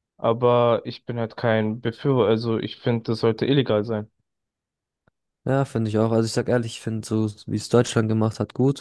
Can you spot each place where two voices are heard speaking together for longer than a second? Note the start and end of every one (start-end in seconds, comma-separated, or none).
none